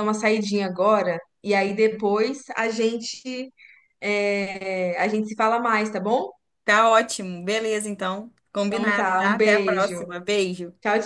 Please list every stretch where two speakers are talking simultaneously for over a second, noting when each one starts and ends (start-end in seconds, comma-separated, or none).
8.7-10.1